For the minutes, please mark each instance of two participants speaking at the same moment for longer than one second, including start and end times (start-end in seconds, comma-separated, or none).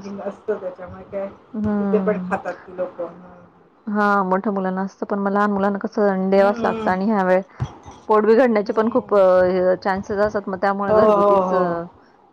none